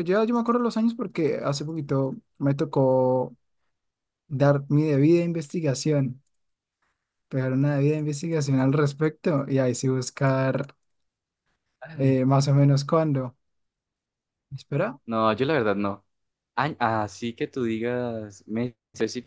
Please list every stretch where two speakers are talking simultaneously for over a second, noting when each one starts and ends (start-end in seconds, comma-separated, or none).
none